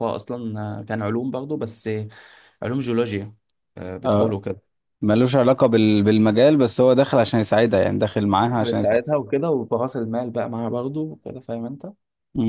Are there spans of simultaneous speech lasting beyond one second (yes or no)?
no